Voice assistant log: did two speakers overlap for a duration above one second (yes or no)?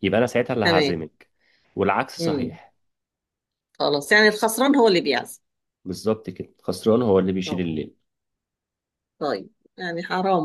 no